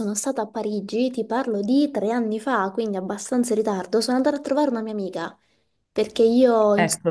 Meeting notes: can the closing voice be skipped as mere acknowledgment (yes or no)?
yes